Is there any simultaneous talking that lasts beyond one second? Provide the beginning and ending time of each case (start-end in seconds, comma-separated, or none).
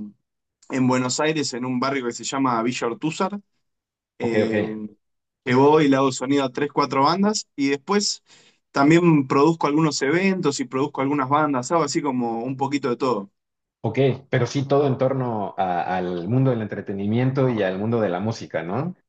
none